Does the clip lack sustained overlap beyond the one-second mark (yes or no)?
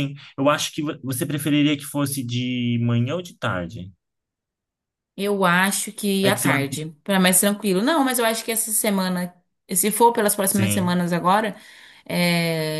yes